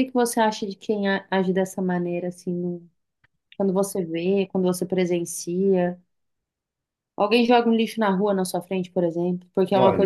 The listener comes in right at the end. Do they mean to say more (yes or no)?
yes